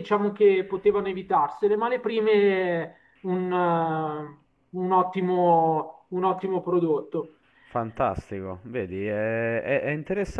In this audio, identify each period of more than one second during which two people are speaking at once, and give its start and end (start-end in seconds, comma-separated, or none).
none